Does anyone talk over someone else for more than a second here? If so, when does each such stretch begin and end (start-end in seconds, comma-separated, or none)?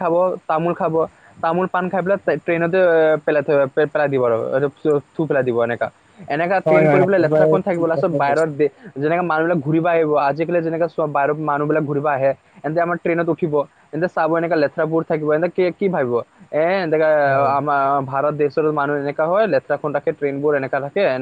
6.7-8.5